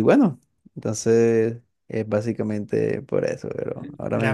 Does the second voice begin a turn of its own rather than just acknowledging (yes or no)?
yes